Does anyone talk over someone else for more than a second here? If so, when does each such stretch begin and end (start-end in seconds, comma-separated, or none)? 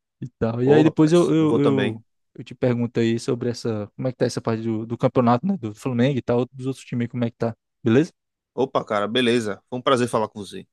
0.6-2.0